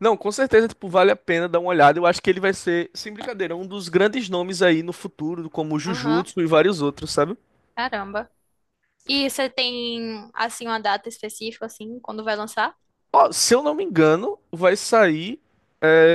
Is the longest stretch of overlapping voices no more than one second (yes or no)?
yes